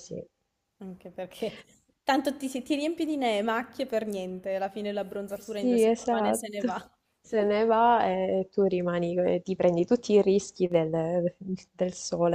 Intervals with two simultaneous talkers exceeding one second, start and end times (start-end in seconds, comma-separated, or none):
5.4-6.7